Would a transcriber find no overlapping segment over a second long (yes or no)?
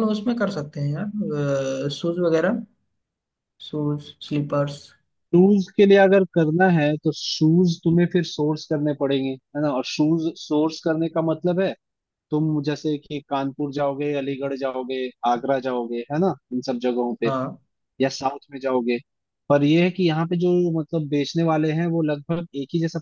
yes